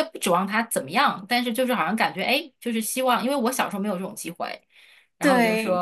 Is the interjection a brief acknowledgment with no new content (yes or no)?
yes